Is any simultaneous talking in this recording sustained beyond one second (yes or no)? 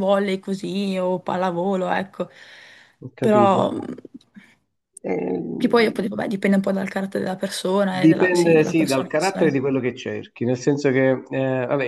yes